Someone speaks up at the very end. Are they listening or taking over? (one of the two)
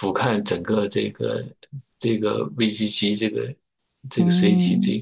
taking over